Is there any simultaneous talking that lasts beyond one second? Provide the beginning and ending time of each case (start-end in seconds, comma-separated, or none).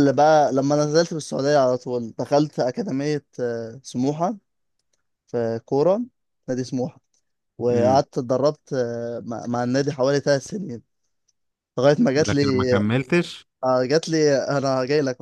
none